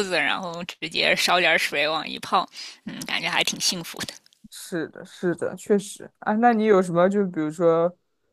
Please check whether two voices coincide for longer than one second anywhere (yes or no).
no